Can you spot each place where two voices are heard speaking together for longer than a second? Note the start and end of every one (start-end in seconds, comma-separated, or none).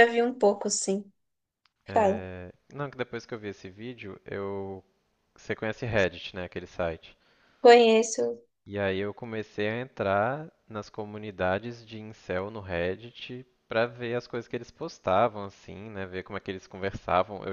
none